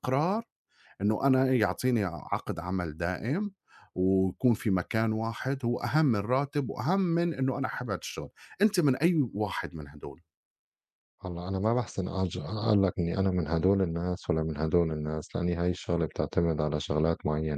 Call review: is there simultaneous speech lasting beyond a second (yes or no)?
no